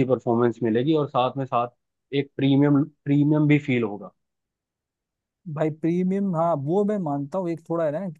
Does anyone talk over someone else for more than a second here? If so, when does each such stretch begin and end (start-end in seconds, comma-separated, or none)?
none